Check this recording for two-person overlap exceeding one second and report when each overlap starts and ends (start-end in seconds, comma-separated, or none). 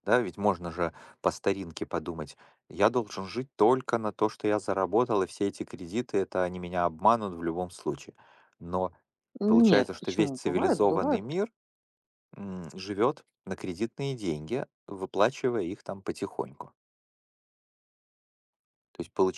9.5-11.4